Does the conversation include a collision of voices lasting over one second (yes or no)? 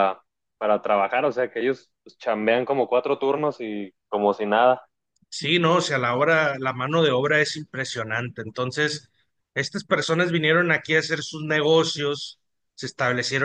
no